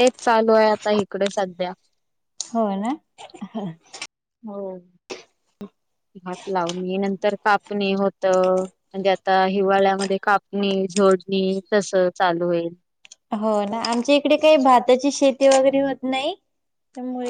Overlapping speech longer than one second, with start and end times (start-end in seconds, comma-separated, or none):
none